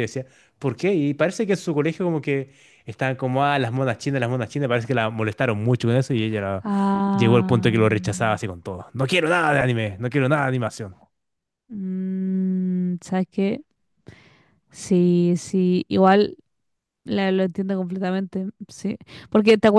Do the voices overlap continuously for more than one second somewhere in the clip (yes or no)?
yes